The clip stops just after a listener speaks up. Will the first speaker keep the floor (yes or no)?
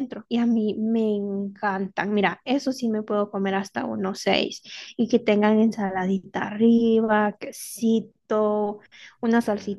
no